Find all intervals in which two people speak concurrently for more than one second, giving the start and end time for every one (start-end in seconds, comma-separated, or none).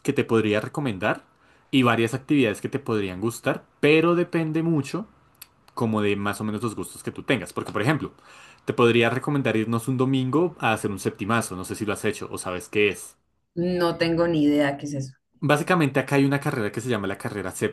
none